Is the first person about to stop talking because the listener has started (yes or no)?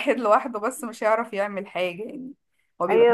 yes